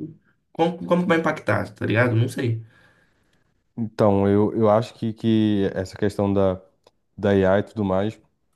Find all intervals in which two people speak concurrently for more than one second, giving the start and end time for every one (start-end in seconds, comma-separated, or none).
none